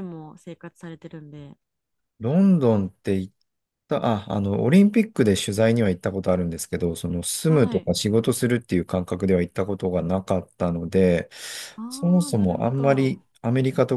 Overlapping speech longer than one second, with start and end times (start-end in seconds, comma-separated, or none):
11.9-13.2